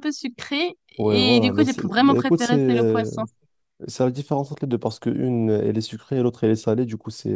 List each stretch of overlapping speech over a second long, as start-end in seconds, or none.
1.0-3.1